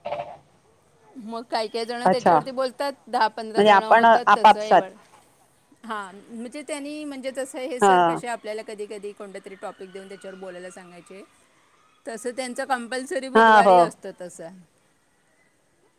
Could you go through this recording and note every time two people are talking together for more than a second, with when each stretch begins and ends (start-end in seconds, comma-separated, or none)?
3.4-4.8